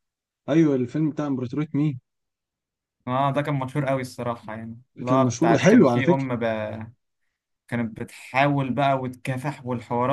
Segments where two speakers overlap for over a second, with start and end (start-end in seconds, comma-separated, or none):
5.0-6.3